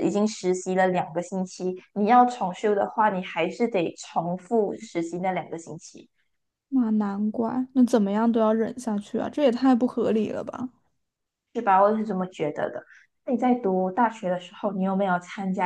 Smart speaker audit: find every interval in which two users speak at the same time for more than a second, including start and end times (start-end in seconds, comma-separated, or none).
none